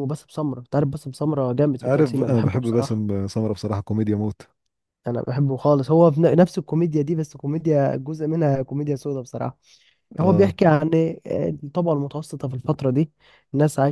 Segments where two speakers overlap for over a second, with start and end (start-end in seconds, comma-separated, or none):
1.8-3.0